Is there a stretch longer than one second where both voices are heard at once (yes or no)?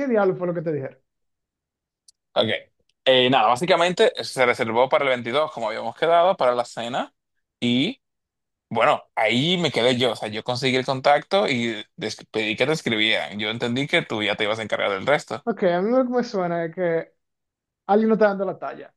no